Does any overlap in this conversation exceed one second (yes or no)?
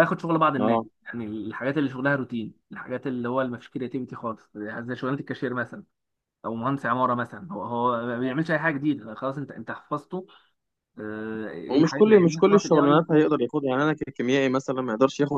yes